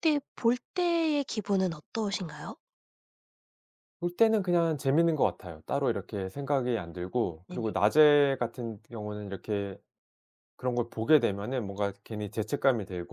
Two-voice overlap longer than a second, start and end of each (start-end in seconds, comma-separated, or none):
none